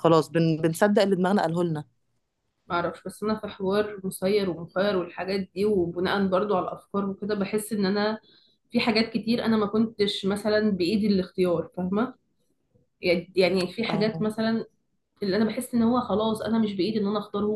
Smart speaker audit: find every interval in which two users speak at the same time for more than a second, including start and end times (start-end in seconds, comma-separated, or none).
none